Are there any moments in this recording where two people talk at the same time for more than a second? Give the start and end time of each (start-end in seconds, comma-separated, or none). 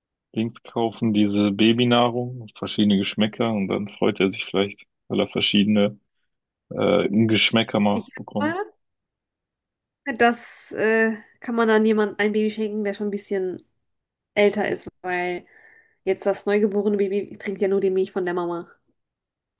none